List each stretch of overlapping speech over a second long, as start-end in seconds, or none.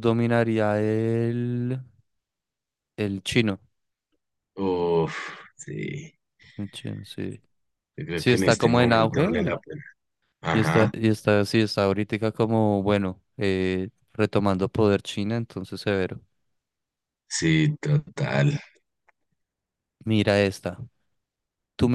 8.1-9.5